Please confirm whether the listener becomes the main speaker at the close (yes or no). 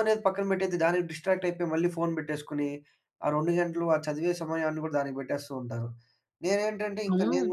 no